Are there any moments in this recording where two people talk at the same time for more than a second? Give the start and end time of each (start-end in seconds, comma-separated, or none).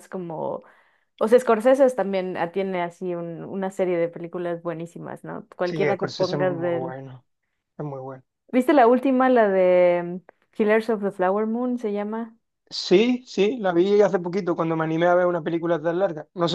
5.6-6.9